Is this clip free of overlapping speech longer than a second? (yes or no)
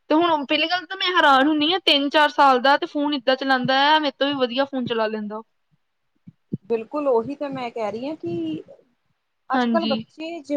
yes